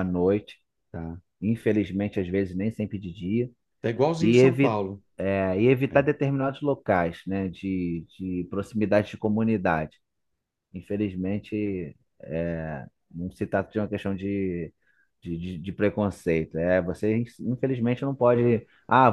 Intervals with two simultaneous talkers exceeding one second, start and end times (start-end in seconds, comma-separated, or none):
none